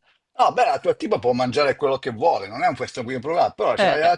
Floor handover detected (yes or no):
no